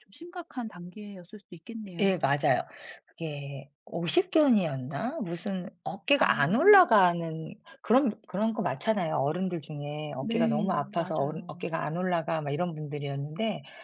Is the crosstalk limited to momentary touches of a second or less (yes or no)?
no